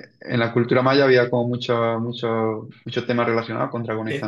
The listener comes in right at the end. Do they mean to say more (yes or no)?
yes